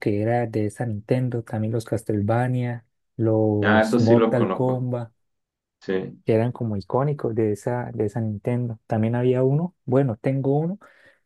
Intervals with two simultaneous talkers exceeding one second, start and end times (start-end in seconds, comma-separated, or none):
3.6-4.9